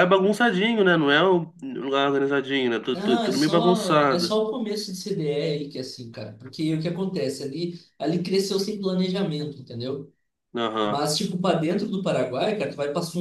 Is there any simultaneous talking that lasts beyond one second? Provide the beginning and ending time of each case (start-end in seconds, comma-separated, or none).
3.0-4.4